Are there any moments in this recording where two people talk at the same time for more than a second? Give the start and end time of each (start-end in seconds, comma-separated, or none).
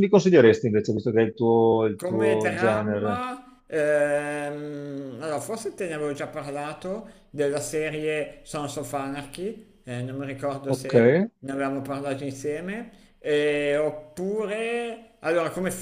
1.9-3.3